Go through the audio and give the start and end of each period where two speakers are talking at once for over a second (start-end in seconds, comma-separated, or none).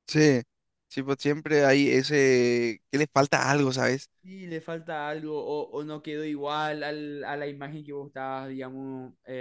none